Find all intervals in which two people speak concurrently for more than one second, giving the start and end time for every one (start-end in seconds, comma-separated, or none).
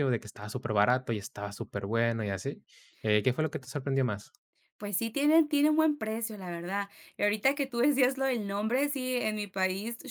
none